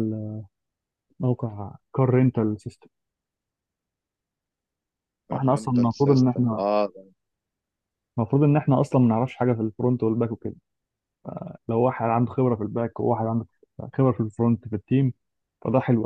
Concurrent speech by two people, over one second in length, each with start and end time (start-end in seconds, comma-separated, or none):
5.3-6.7